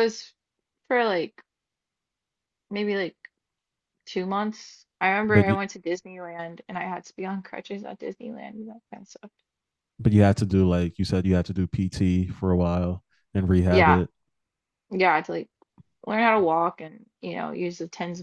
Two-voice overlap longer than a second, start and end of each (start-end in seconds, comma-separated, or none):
none